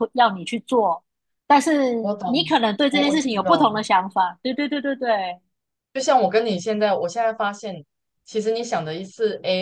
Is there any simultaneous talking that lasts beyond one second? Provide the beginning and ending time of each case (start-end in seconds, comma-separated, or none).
2.0-3.8